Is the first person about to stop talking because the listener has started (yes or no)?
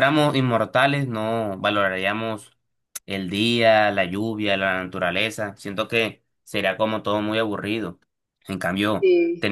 no